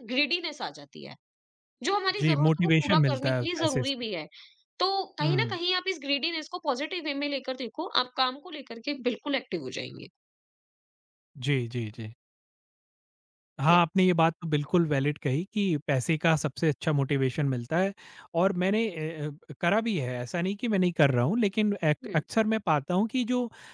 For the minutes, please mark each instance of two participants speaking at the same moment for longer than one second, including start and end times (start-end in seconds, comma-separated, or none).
2.2-4.0